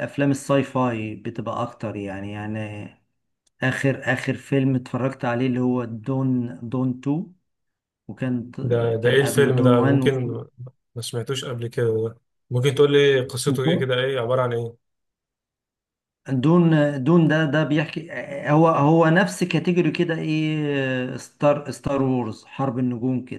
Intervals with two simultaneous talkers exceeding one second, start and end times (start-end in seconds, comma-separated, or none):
9.0-10.3